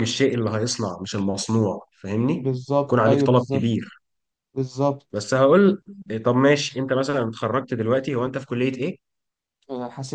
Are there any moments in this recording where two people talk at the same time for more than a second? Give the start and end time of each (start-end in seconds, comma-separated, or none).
2.3-3.9